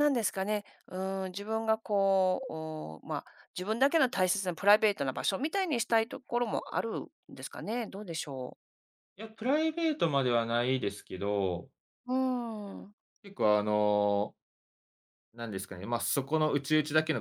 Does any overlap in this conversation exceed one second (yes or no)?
no